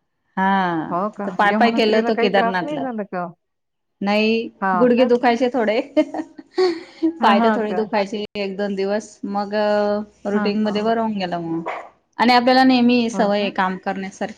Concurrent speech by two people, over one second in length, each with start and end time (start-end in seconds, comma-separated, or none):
1.1-2.9